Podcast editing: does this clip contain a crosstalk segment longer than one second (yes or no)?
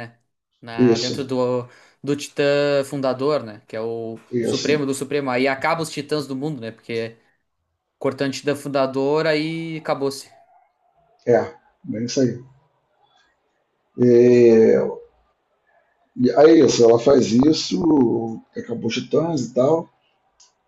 no